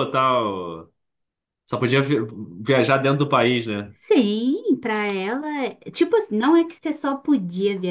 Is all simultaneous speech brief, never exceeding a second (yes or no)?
yes